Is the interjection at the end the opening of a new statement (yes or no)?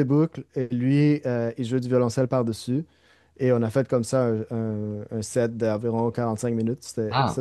yes